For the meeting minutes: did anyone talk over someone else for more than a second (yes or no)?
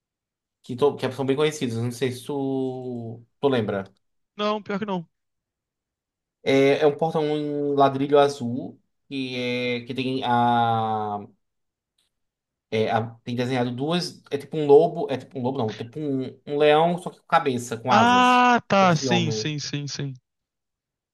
yes